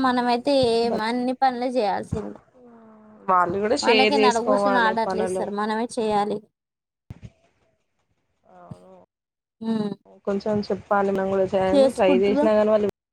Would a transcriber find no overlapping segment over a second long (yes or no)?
no